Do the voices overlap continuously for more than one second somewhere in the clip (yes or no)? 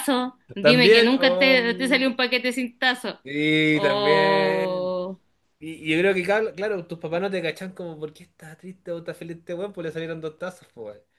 yes